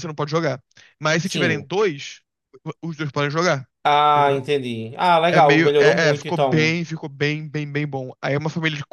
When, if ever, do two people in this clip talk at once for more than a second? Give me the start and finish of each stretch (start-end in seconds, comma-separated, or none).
5.3-6.8